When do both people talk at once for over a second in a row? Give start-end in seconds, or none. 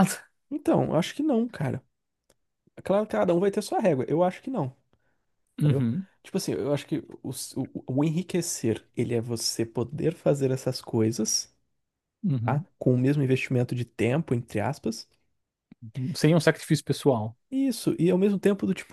none